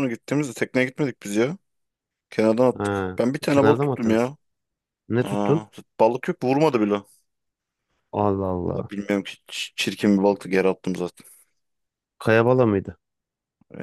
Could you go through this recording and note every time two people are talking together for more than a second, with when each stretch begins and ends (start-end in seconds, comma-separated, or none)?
2.8-4.3